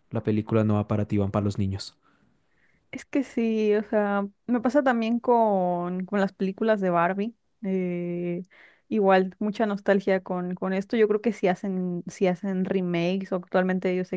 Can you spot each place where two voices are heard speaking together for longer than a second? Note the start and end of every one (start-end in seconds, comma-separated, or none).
none